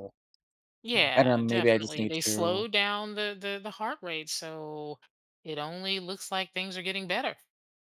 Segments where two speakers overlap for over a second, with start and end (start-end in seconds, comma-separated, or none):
1.1-2.6